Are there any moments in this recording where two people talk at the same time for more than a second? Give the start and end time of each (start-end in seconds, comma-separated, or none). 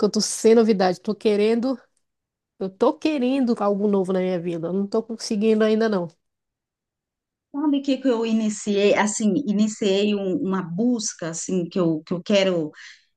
none